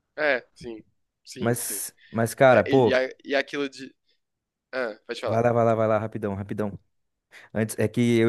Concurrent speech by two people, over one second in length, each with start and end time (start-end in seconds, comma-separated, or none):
none